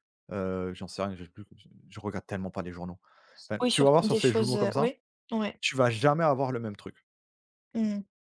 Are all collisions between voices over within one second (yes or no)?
no